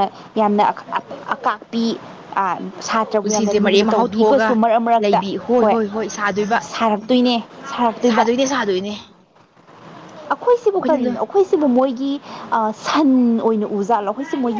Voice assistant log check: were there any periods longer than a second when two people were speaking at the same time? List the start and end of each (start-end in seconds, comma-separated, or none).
3.2-4.5